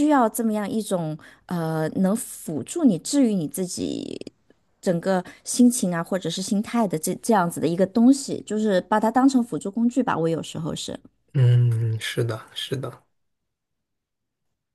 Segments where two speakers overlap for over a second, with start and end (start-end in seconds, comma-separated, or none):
none